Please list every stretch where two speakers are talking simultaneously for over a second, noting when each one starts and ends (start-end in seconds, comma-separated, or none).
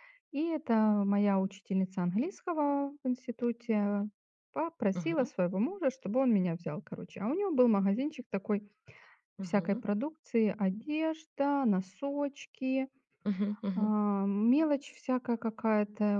none